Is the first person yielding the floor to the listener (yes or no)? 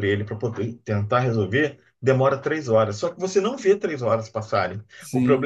no